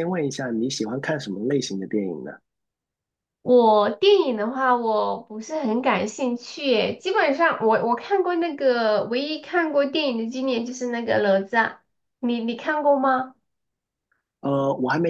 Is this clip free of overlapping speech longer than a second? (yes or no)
yes